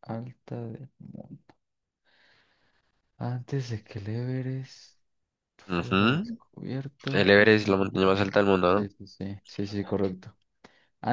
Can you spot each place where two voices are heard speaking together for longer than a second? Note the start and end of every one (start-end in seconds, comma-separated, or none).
7.1-8.9